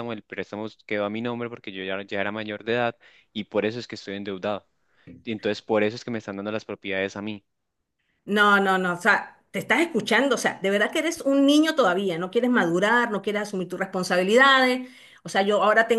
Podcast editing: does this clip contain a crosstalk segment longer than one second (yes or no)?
no